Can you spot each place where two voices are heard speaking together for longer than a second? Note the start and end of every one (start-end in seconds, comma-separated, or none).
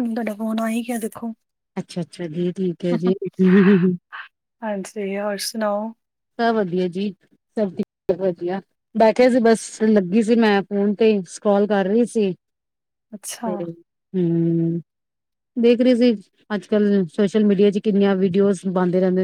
none